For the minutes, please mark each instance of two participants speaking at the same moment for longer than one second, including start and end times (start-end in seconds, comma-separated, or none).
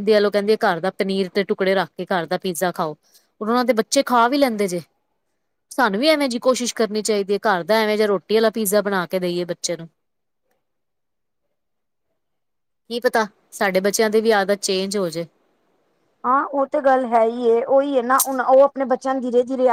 none